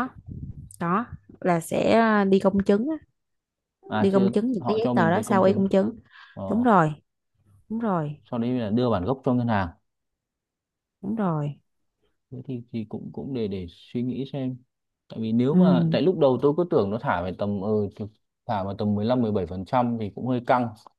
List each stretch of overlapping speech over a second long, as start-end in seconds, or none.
4.0-5.7